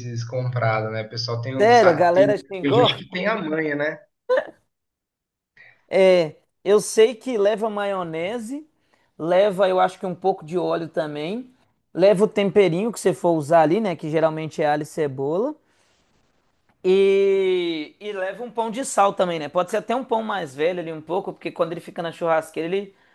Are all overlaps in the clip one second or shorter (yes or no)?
no